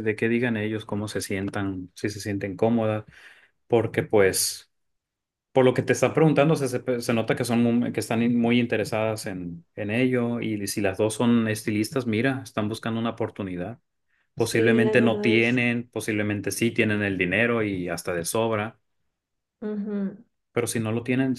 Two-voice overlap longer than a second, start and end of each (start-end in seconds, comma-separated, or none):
14.4-15.6